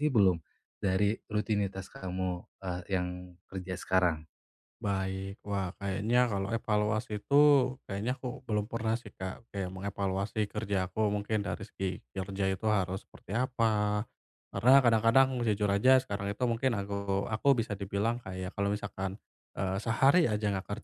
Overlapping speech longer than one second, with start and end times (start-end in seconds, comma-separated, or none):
none